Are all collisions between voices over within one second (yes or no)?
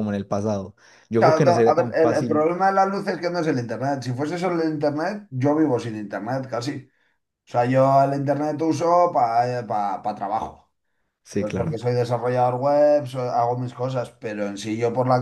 no